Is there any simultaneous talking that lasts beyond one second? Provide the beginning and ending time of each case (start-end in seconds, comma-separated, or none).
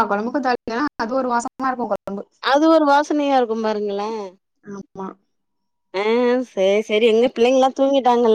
none